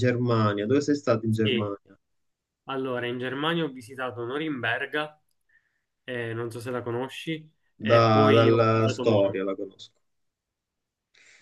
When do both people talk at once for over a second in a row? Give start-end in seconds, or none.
7.8-9.4